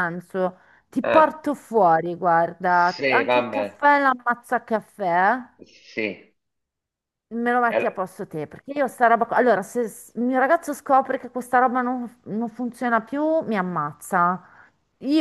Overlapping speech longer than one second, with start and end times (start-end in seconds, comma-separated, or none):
2.6-3.8